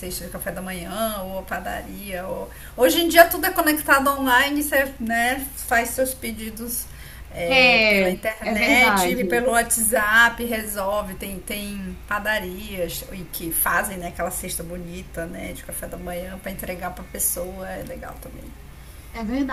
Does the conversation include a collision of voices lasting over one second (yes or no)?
yes